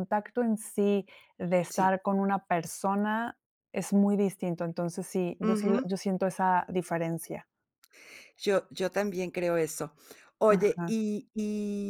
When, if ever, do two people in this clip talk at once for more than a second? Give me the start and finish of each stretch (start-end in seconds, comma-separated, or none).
none